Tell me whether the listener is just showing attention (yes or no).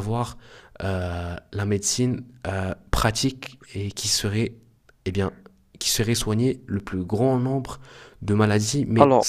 yes